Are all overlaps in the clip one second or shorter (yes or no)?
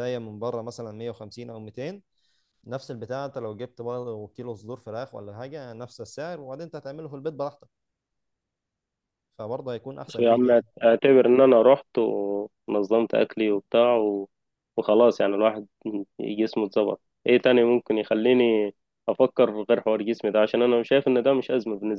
yes